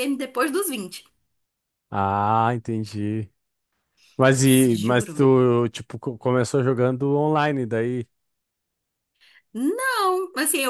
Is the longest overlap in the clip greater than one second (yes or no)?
no